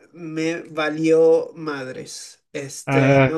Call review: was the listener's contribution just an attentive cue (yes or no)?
yes